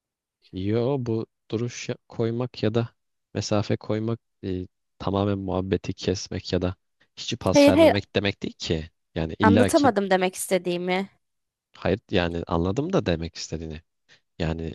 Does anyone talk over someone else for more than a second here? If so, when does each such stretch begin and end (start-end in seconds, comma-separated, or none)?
none